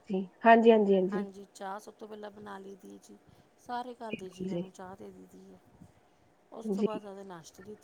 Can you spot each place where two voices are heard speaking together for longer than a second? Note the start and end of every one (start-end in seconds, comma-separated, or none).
none